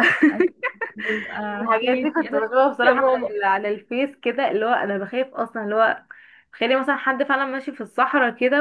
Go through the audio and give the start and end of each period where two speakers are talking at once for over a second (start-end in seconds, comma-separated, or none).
1.6-3.3